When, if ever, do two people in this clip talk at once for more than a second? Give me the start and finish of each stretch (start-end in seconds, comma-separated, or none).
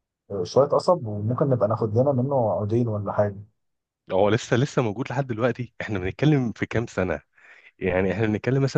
none